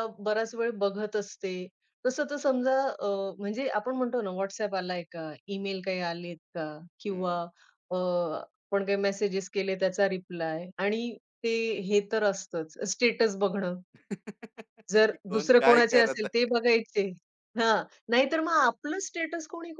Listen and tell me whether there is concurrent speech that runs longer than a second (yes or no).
yes